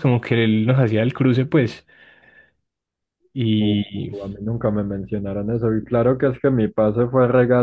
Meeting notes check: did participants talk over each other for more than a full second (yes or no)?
no